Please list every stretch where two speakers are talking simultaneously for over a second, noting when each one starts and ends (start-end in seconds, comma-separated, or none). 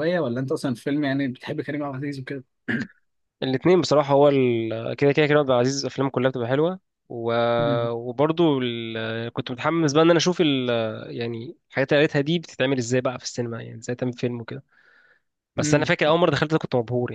none